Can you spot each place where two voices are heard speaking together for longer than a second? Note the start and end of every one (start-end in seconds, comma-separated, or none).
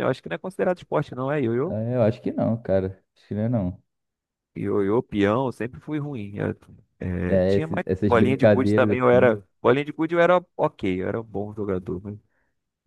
7.3-9.3